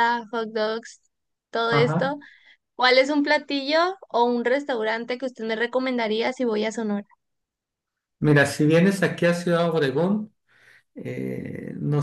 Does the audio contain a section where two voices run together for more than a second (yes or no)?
no